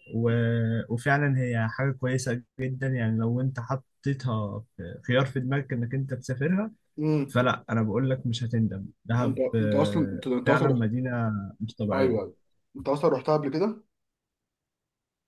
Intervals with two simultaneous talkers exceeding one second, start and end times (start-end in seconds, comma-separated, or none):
9.2-10.8